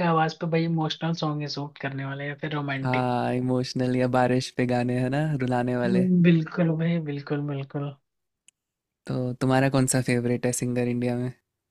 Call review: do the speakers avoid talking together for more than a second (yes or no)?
yes